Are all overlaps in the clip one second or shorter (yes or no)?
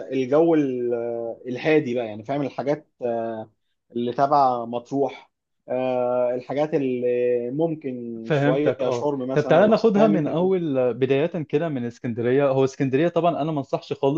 no